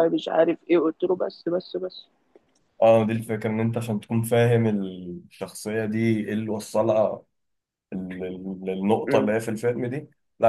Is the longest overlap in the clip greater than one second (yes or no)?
no